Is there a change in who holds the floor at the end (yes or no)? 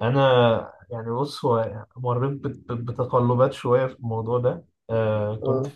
no